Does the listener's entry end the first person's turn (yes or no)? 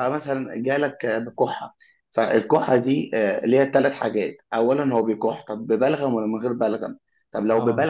no